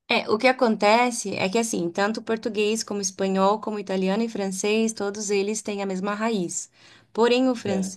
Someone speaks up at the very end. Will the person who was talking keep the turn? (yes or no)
yes